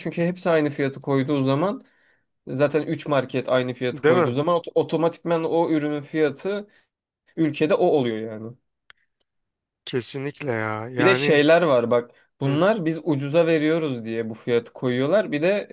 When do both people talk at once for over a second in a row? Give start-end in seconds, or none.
none